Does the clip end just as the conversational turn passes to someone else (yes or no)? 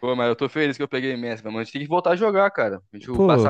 yes